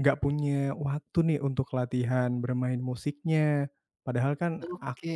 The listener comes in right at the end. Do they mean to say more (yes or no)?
no